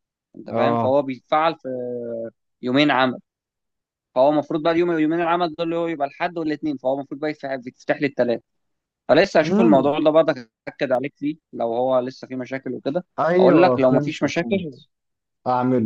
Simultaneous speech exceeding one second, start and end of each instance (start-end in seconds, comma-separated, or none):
13.2-14.7